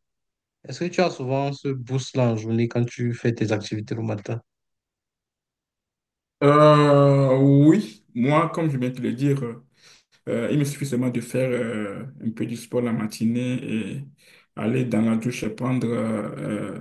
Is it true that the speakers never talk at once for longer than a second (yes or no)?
yes